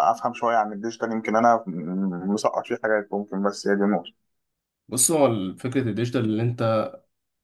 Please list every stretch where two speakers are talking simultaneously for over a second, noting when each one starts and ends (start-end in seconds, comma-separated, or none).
none